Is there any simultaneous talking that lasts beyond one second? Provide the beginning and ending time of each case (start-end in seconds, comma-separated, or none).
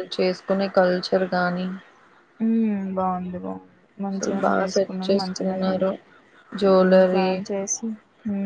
4.1-5.7